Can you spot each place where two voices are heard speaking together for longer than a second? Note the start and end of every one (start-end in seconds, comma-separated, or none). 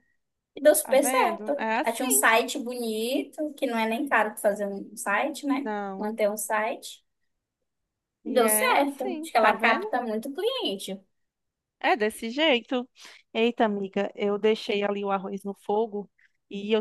0.8-2.2, 8.2-9.9